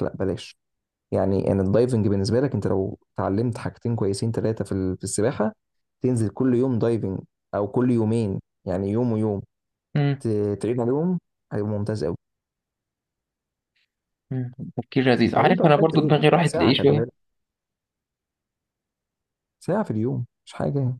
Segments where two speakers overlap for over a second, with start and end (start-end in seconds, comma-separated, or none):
15.3-17.1